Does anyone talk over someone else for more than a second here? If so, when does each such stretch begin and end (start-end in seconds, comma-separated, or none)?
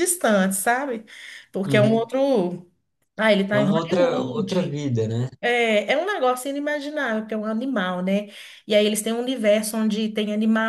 3.5-4.8